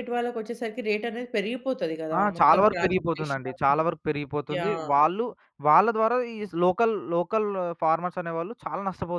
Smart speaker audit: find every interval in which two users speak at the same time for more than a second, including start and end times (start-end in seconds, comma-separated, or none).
2.2-3.7